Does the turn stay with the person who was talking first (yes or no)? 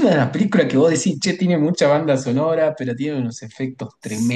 no